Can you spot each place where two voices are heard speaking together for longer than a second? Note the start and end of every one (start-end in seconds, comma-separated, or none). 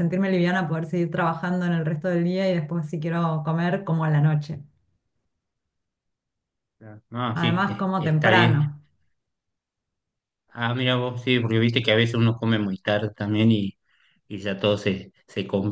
7.3-8.7